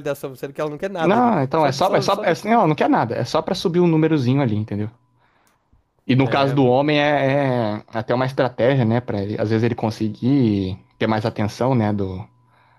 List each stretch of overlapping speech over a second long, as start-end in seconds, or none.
1.0-2.7